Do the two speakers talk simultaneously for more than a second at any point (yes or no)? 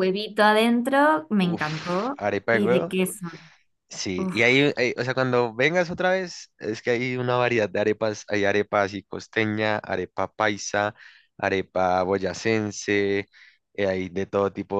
yes